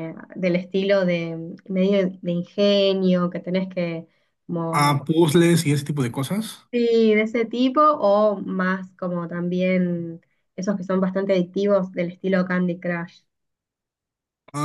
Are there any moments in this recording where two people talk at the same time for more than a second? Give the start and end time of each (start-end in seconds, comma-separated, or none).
none